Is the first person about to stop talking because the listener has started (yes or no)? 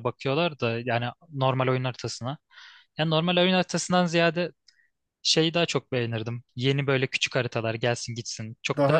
yes